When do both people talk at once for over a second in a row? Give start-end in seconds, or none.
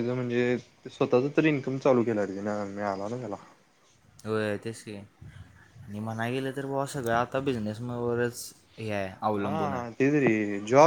none